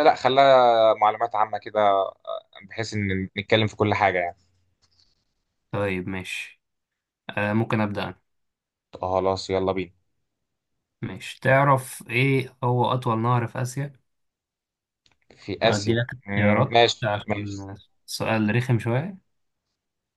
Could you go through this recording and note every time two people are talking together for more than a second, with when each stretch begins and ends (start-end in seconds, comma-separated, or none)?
15.6-17.7